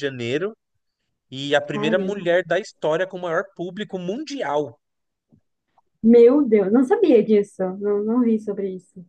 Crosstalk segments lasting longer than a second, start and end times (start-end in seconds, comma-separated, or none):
none